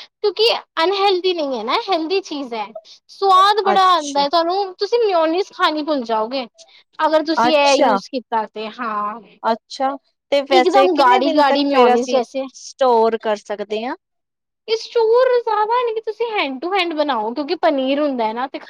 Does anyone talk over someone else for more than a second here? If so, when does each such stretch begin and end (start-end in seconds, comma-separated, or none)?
10.6-12.2